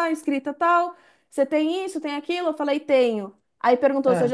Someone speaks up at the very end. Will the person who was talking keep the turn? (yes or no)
yes